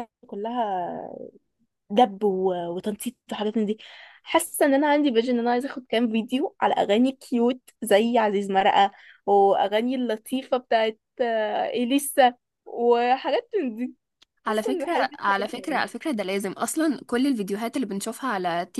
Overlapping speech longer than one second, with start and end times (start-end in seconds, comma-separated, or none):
14.5-15.8